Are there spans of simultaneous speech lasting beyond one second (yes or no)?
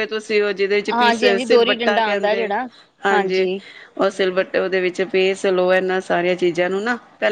yes